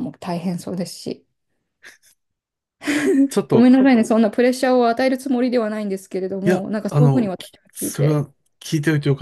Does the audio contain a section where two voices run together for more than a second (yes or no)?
yes